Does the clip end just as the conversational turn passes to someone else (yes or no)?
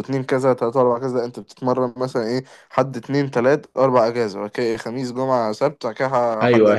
yes